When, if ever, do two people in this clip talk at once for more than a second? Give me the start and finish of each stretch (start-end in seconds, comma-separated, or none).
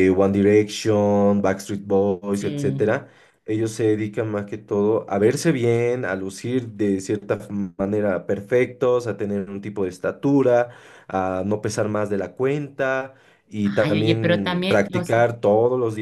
13.6-15.2